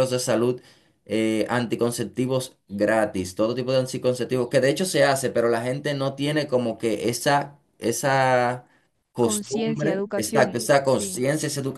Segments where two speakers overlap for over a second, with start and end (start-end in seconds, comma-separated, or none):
9.2-11.2